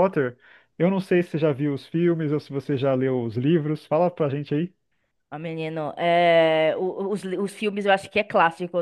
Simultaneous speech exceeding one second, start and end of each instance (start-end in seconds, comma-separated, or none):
none